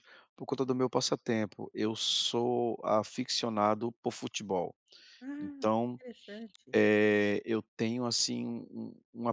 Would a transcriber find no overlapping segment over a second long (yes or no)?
yes